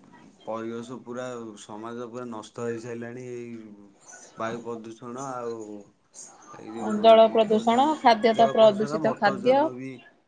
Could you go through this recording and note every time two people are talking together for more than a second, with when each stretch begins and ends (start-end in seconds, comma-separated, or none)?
6.8-9.5